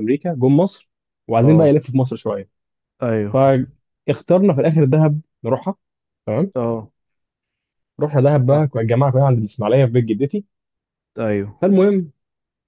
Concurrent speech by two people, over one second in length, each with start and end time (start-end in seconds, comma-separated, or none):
none